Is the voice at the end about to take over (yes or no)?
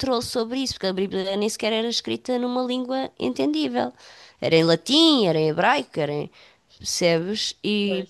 no